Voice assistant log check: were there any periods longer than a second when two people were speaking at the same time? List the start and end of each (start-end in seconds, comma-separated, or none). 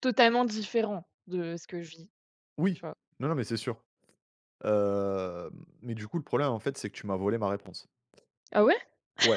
none